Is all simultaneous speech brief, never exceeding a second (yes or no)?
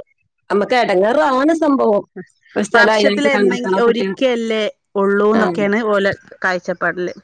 no